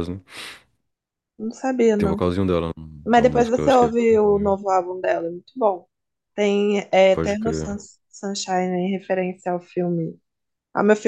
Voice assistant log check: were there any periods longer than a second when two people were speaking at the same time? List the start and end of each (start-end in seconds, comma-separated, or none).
3.1-4.7